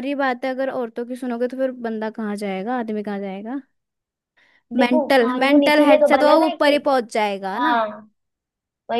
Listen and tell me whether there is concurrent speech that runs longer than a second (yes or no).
yes